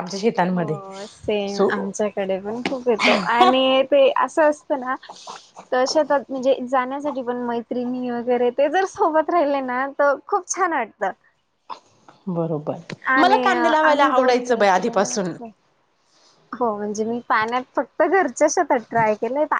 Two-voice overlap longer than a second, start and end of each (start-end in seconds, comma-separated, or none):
13.8-15.3